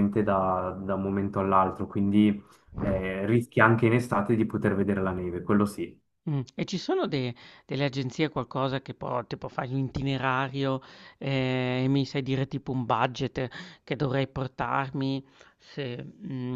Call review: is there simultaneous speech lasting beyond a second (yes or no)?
no